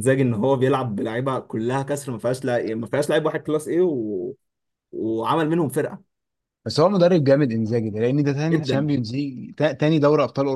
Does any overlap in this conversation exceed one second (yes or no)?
no